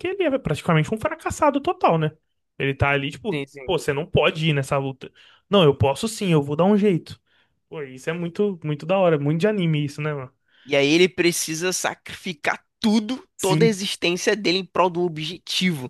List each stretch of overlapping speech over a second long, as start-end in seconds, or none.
none